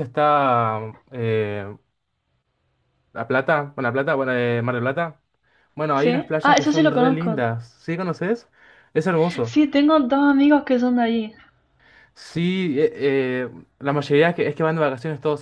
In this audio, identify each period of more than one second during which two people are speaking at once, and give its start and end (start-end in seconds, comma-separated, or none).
6.0-7.4